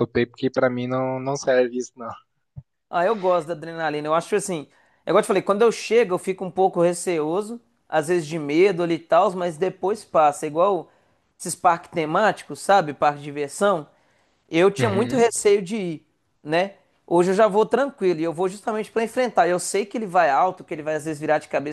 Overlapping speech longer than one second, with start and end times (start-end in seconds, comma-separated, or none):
none